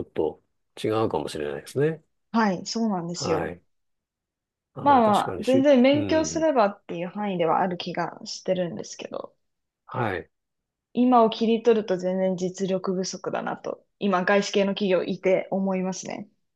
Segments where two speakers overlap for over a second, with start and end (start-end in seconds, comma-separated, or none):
4.8-6.5